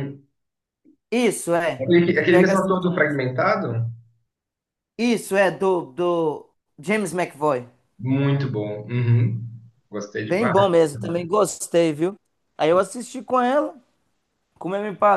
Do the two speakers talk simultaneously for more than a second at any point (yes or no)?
yes